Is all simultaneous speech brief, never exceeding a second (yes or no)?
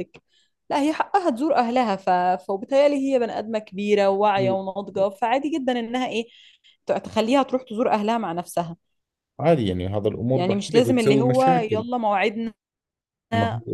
no